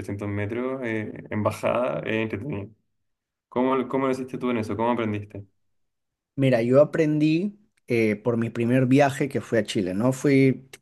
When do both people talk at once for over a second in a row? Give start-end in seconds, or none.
none